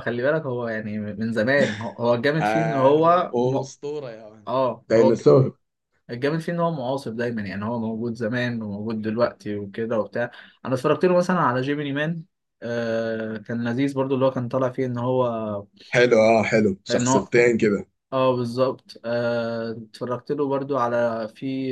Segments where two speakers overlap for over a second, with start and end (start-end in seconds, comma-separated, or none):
2.4-3.6